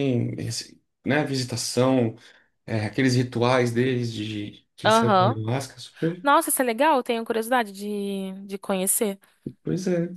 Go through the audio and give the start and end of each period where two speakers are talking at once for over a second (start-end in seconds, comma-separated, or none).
none